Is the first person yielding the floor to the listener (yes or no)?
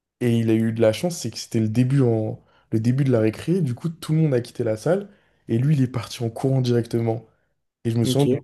no